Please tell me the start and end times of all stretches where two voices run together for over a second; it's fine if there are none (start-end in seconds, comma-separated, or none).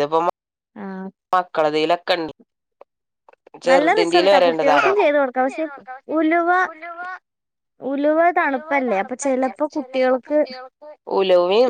8.4-10.4